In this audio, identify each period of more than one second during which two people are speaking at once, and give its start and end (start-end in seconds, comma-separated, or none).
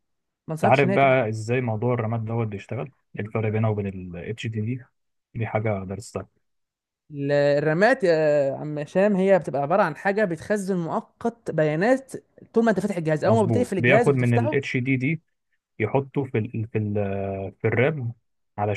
13.2-14.7